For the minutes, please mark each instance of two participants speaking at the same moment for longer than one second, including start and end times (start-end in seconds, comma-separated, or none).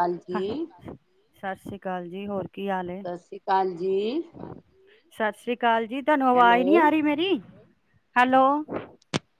none